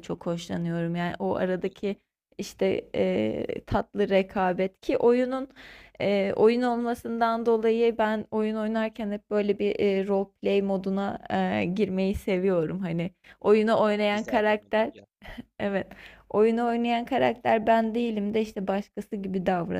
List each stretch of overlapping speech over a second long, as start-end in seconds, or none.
13.4-14.9